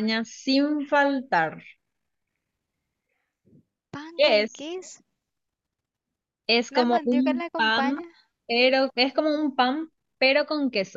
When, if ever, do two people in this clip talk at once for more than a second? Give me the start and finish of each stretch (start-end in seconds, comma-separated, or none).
6.7-8.0